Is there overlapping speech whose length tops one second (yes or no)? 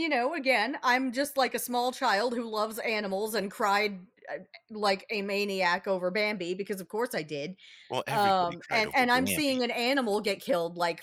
yes